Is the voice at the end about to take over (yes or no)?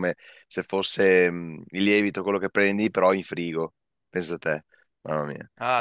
yes